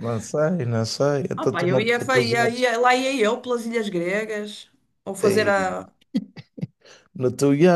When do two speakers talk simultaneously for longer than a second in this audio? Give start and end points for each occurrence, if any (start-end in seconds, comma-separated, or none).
1.4-2.7